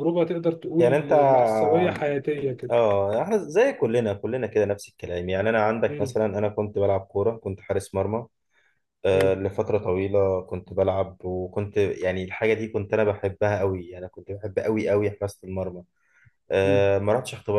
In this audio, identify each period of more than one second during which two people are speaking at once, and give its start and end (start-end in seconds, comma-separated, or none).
none